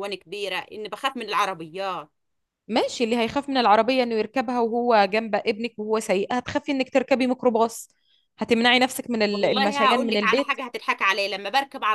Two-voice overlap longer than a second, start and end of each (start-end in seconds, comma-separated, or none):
9.3-10.6